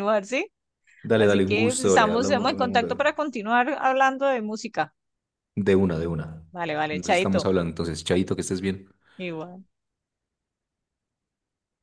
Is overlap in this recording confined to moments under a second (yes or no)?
no